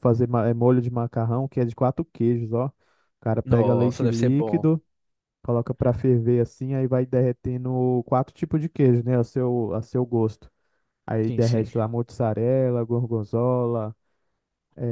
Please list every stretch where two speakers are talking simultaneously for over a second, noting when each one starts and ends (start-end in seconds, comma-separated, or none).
3.4-4.7